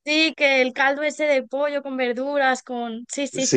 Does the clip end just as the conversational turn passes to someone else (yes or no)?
yes